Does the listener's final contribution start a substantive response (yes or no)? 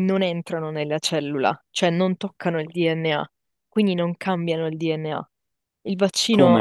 yes